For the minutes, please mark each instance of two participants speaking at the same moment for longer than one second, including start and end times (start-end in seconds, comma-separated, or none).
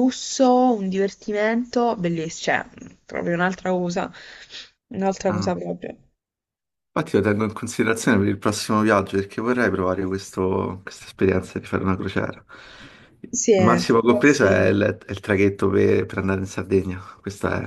13.3-14.8